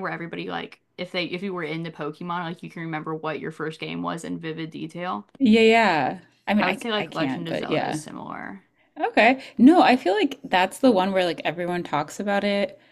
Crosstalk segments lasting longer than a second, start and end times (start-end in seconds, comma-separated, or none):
6.6-8.0